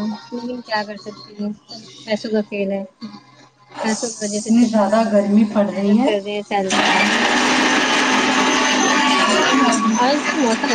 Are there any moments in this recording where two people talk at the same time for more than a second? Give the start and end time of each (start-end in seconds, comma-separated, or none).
4.3-6.2